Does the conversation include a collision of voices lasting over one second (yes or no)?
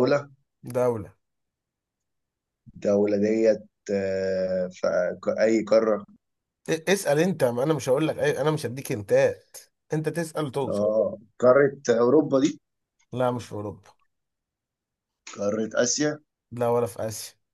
no